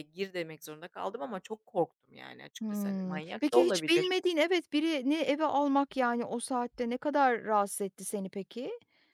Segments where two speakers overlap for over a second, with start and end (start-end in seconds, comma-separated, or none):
2.6-4.1